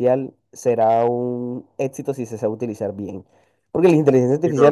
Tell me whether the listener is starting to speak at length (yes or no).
no